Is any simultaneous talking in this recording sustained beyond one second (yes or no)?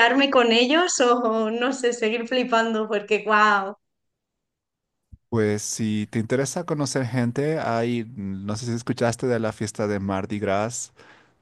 no